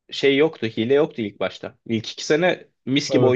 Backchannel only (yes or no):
yes